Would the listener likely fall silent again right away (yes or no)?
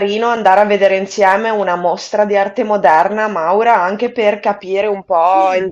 yes